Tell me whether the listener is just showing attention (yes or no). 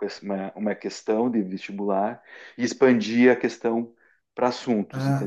no